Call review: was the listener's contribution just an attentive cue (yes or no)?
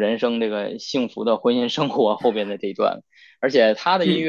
yes